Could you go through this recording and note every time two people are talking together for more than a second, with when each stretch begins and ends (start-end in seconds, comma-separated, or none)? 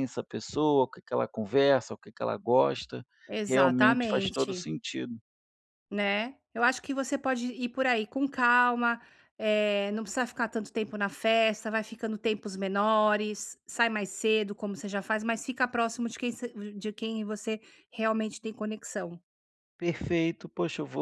3.5-4.7